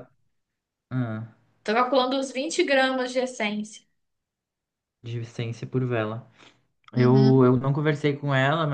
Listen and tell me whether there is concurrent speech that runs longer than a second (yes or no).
no